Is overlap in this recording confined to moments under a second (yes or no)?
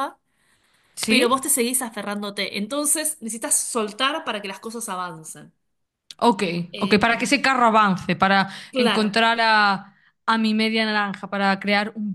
yes